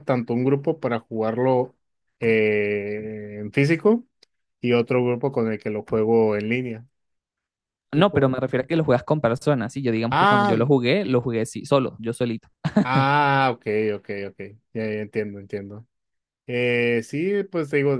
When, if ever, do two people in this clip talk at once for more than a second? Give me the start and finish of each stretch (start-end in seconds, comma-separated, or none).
none